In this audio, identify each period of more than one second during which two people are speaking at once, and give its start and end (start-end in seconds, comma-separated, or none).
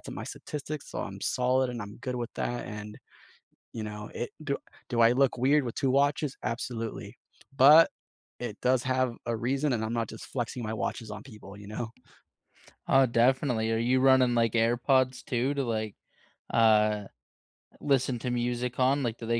none